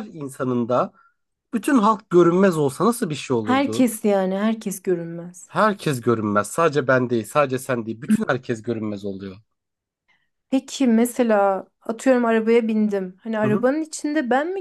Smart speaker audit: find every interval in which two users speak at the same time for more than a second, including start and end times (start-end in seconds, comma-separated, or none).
none